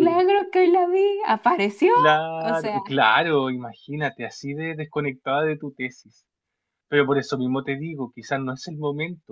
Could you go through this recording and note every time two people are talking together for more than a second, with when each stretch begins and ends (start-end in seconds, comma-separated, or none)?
none